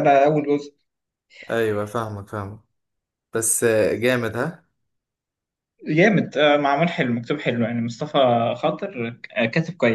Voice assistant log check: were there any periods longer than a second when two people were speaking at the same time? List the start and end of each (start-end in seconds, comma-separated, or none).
none